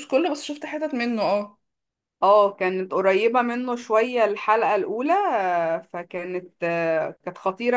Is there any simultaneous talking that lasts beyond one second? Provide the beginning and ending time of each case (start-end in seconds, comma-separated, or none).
none